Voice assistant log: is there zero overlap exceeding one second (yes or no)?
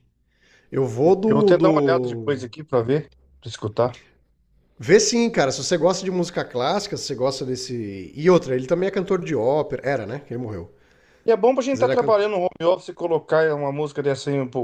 no